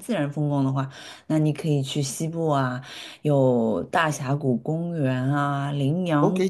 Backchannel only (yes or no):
no